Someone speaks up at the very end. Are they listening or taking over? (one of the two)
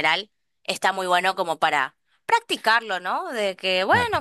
listening